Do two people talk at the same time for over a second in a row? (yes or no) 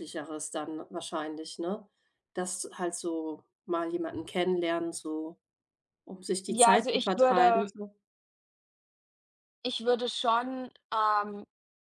yes